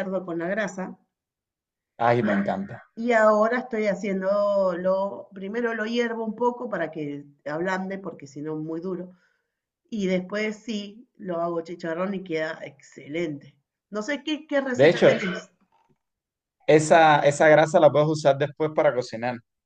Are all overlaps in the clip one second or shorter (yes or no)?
yes